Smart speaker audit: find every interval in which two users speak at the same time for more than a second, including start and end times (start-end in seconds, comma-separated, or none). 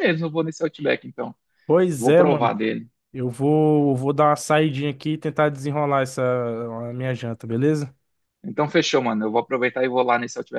none